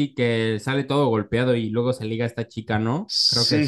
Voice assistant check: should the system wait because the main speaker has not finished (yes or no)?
no